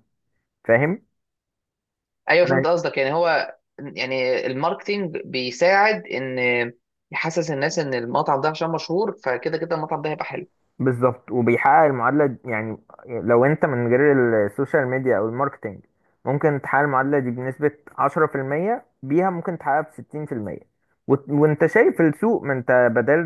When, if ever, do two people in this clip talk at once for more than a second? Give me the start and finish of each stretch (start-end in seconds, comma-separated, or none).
none